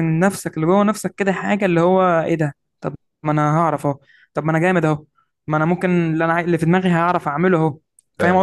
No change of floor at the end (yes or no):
no